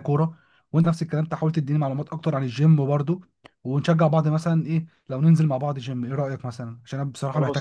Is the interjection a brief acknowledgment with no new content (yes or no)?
no